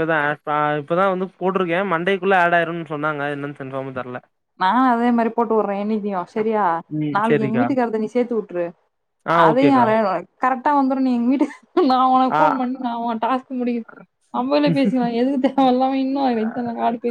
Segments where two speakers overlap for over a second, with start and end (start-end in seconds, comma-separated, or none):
none